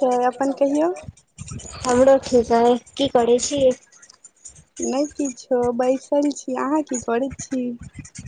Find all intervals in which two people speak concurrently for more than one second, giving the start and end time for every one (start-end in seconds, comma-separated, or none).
none